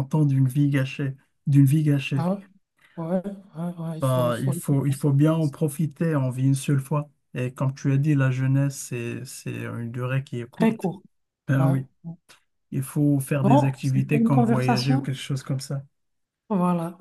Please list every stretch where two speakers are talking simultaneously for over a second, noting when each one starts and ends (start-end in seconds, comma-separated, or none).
4.0-5.5, 13.4-15.1